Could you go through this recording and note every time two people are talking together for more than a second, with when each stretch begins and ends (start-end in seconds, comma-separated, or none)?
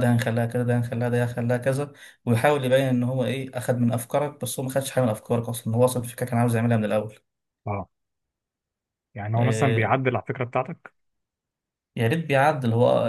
none